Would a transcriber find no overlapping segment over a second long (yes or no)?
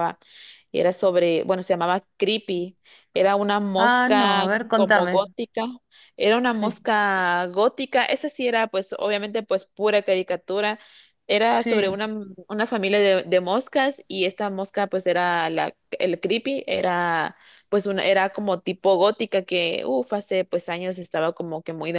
no